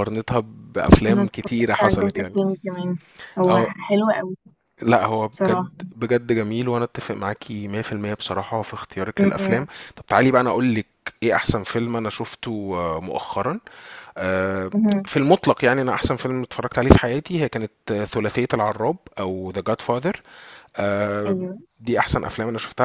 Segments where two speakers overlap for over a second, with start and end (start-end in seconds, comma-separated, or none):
1.1-2.4